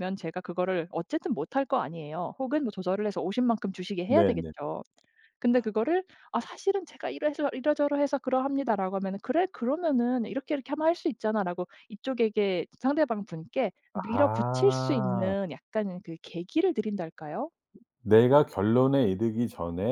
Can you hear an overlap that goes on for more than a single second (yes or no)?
yes